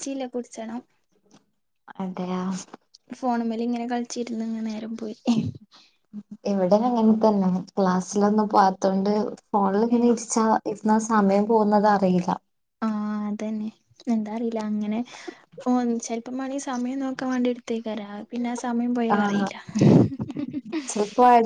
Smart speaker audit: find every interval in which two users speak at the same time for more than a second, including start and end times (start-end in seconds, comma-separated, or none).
none